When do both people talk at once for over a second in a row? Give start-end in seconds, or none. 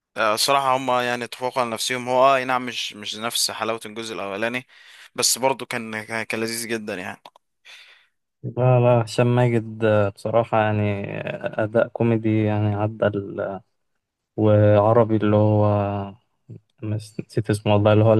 none